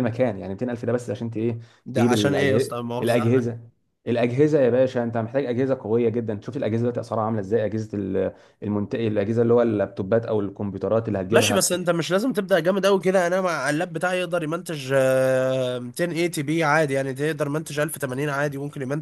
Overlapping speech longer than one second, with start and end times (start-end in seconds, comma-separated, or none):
1.9-3.5